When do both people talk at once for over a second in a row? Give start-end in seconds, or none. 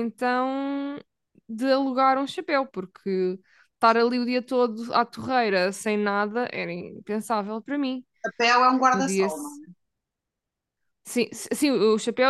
none